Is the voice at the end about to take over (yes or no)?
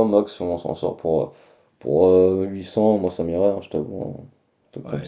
yes